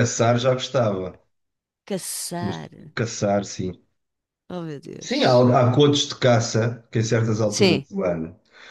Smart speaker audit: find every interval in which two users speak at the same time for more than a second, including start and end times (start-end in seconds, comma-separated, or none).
none